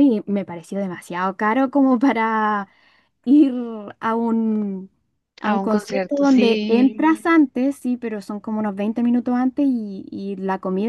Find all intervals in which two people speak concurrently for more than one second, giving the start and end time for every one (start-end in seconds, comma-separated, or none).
5.4-7.0